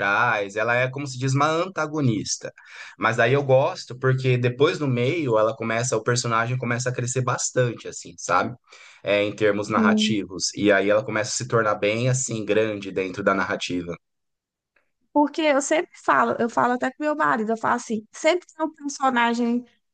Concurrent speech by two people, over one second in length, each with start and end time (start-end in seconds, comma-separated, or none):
none